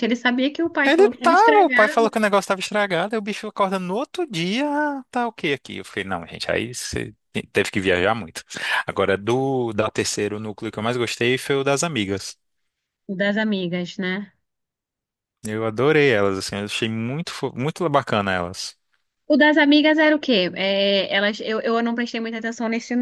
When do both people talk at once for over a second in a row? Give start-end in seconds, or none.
0.8-2.1